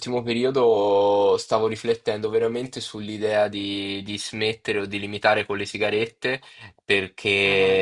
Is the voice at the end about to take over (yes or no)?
no